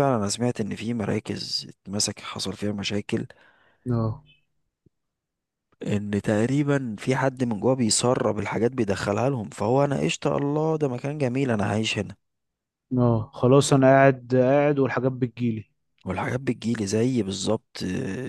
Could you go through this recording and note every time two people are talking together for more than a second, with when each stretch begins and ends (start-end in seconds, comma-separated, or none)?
none